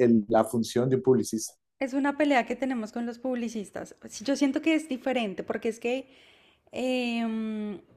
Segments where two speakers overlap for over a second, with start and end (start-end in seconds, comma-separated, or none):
none